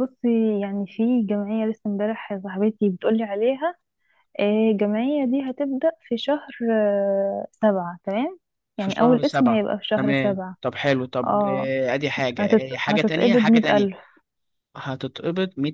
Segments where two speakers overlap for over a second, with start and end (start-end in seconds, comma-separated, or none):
8.8-10.6, 12.4-13.9